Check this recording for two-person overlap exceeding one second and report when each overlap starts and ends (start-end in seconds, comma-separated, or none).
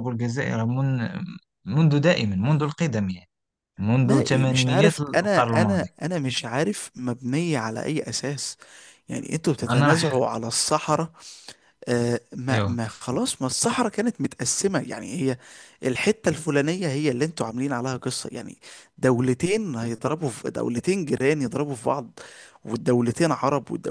4.0-5.9